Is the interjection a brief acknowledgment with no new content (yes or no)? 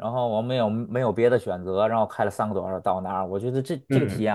yes